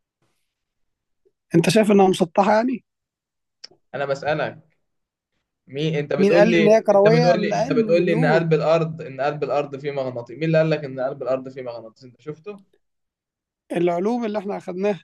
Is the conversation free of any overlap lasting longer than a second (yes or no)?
no